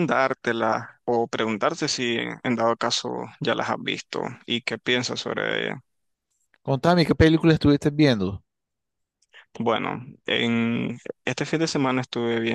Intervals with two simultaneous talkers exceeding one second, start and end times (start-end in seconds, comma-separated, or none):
none